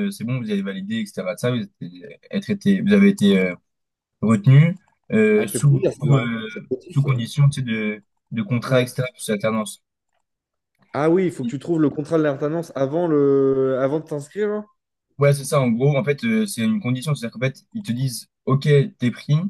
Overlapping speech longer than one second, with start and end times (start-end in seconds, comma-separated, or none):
5.4-7.2